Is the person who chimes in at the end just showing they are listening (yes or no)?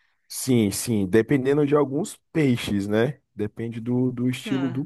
yes